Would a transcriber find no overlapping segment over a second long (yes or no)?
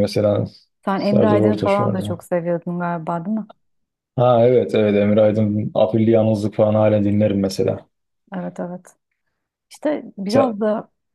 no